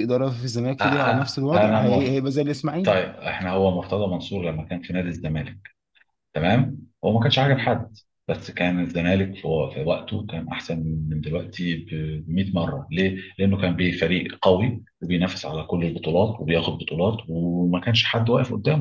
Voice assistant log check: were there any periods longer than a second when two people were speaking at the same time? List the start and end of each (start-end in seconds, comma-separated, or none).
0.8-2.2